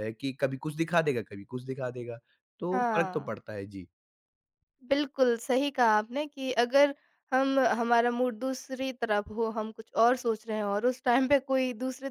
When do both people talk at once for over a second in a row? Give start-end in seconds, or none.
none